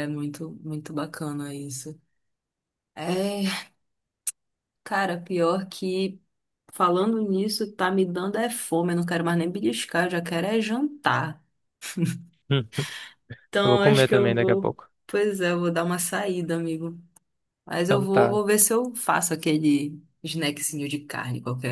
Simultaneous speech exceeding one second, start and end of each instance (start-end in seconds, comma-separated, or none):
13.6-14.9